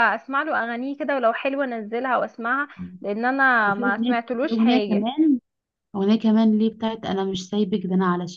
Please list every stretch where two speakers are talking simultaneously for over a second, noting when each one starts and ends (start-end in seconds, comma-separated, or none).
3.6-5.1